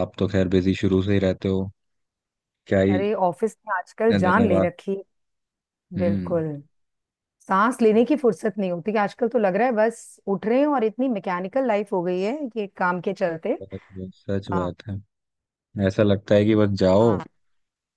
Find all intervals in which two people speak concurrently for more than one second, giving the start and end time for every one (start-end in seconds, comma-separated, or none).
none